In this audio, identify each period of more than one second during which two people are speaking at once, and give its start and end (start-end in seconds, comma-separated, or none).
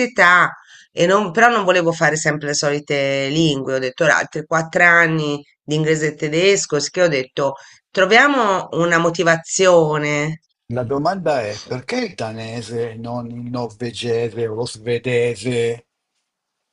none